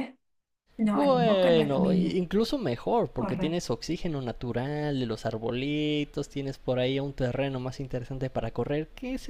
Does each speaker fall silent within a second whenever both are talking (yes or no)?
no